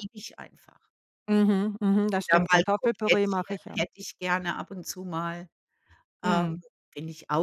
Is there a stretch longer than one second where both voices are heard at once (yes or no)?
yes